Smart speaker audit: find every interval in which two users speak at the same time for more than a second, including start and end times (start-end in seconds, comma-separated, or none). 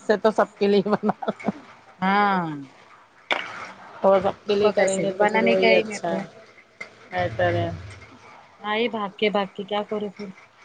4.1-6.1